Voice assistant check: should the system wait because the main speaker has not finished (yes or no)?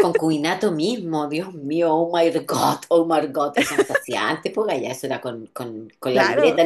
yes